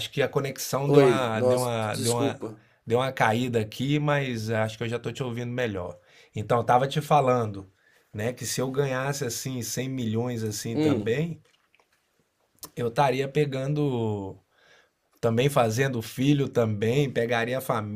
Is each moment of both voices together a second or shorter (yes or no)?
no